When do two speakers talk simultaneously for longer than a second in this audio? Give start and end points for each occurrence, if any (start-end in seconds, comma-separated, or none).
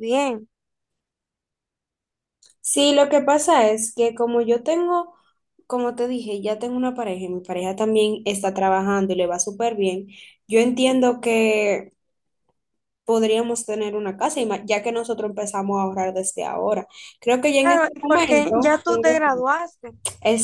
17.5-18.8